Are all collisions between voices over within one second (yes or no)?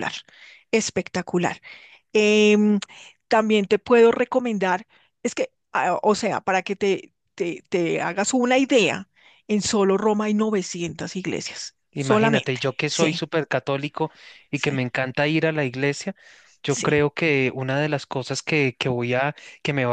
no